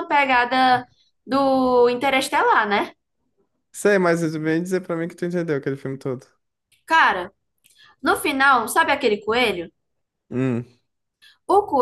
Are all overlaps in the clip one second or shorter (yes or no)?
yes